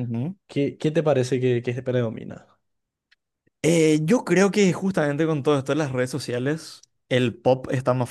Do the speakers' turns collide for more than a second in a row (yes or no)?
no